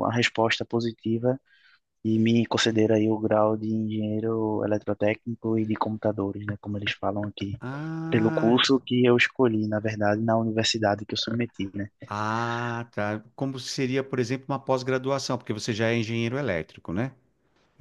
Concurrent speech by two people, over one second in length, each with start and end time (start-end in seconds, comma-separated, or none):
none